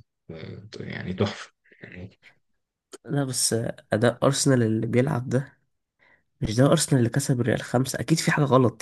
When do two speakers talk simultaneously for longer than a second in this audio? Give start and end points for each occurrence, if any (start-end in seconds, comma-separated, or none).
none